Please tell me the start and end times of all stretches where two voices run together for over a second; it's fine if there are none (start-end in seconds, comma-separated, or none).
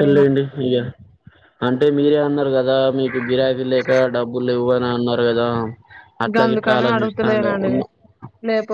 6.3-7.7